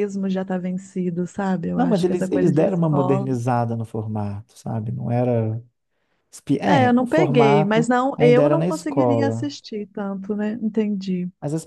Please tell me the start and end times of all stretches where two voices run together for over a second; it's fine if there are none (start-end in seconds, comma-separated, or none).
1.8-3.3, 6.7-9.5